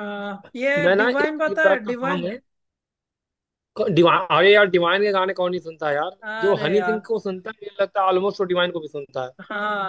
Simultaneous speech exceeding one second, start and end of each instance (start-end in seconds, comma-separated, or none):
0.8-2.3